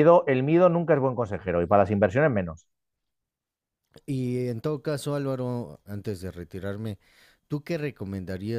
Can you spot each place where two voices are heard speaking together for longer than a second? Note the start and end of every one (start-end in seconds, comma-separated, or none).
none